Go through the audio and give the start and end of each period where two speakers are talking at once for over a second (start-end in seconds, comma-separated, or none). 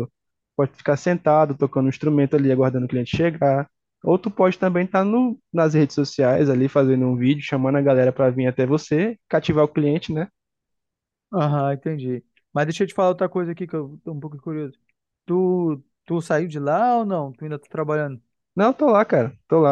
none